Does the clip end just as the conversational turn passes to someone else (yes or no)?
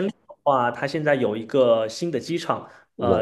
no